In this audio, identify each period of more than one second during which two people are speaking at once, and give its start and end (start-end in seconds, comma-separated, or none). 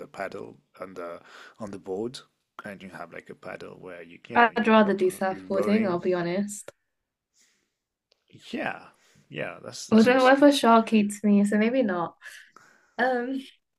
4.3-6.0